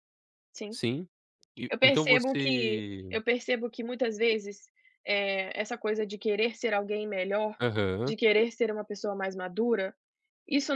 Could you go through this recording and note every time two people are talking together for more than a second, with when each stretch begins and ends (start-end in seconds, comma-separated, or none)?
1.7-3.1